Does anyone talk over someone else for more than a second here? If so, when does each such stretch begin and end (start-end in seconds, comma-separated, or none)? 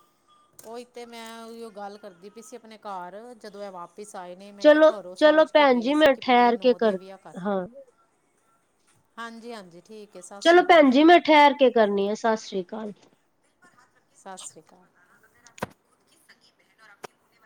4.6-6.7